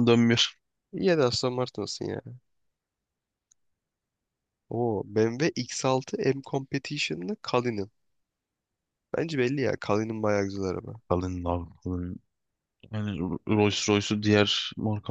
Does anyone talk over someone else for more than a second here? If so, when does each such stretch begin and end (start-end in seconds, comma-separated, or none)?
none